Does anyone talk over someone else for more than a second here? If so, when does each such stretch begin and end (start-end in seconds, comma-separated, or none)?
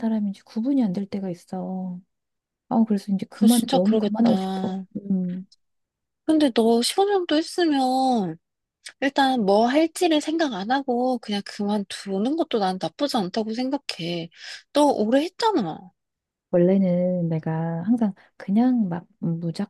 3.3-4.8